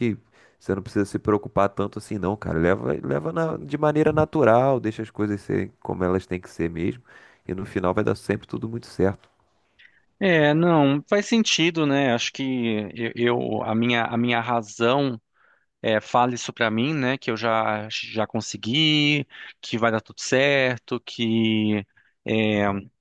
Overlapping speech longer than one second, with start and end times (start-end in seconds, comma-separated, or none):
none